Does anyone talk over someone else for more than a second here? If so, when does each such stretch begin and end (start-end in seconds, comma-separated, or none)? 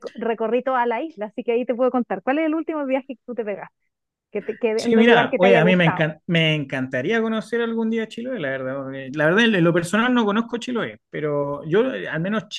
4.8-6.1